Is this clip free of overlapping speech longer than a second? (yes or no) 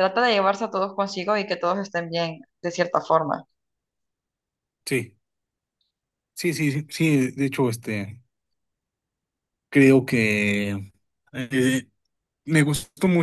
yes